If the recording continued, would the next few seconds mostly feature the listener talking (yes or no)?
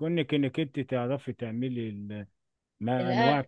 no